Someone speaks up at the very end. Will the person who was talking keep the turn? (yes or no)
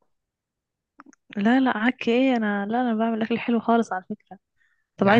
yes